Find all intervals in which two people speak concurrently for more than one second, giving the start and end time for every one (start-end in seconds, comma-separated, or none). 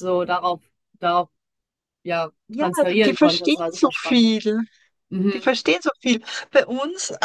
2.5-4.3